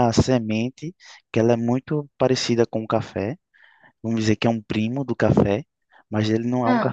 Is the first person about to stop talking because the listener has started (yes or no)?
no